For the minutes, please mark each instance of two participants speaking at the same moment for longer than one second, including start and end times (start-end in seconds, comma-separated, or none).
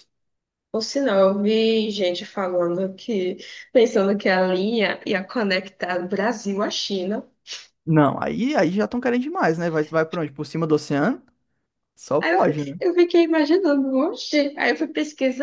none